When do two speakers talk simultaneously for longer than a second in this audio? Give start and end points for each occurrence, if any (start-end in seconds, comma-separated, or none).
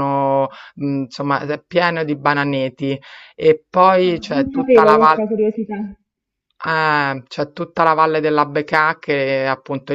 4.0-5.3